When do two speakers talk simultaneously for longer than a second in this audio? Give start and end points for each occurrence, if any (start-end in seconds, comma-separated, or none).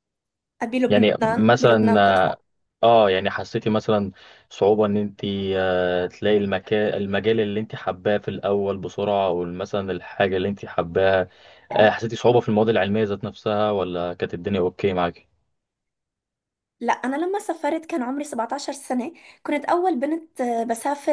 0.9-2.2